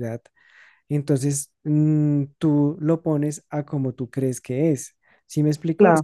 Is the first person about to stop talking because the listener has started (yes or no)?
no